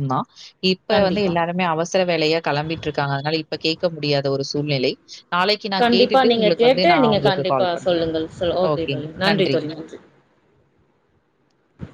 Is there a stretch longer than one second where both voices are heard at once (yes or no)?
yes